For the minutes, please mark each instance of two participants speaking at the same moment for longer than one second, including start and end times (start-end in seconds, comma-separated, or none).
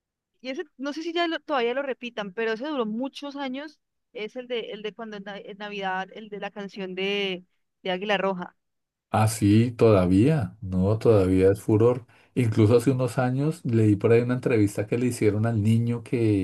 none